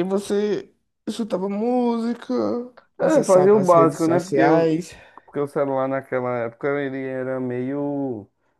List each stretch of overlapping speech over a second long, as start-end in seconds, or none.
3.0-4.7